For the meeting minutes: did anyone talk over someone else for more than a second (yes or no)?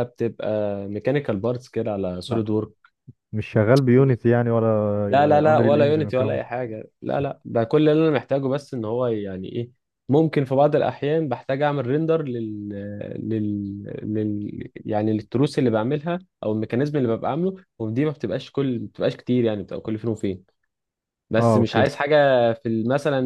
yes